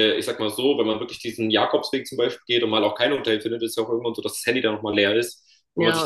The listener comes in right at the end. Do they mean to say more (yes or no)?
no